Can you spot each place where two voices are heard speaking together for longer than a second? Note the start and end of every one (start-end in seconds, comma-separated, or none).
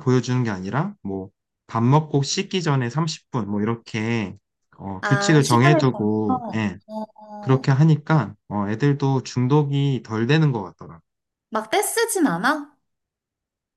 5.0-6.8